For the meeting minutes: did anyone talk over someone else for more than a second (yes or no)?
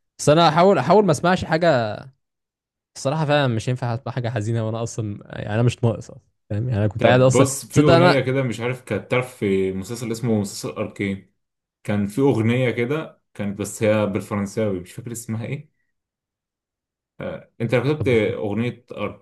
yes